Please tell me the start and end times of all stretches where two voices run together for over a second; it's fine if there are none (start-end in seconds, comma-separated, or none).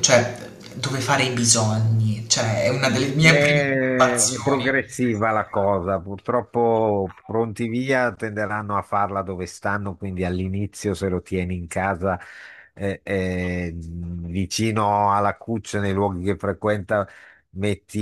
3.2-4.8